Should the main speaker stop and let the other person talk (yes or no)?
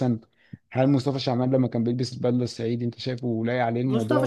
yes